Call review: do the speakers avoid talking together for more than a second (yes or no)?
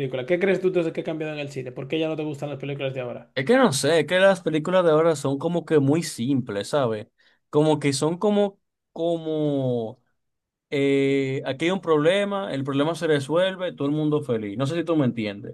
yes